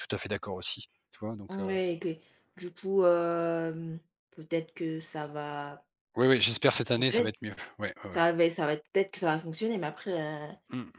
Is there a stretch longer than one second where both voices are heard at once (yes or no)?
no